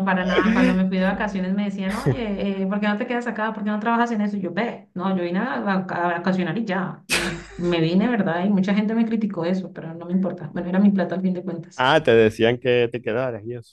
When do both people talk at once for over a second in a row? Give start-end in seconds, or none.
none